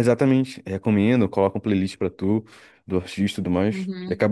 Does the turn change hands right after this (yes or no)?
yes